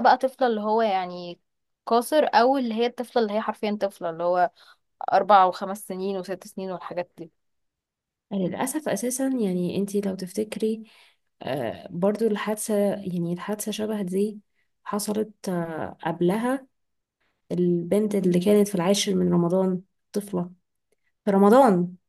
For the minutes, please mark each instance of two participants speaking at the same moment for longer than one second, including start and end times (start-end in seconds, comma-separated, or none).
none